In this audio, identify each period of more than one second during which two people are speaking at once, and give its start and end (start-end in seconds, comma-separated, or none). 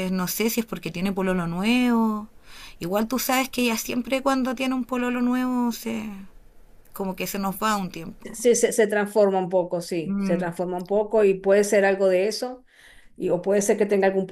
none